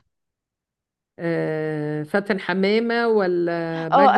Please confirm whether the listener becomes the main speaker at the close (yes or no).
yes